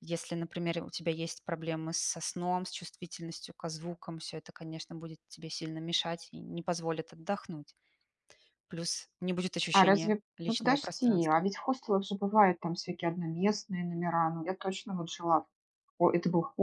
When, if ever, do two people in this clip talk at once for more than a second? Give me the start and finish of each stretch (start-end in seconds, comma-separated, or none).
9.7-11.4